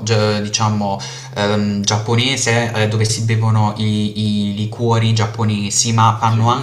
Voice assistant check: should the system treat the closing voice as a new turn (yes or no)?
no